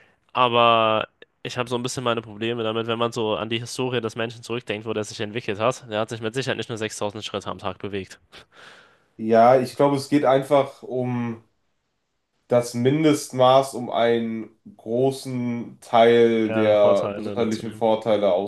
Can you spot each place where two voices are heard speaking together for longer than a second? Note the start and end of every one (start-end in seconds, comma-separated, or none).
16.5-17.8